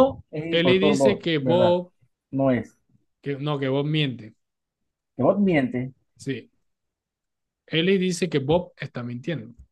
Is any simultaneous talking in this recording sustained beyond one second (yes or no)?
yes